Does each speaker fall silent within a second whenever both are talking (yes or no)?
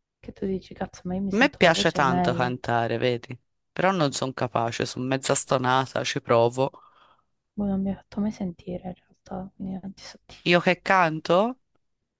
no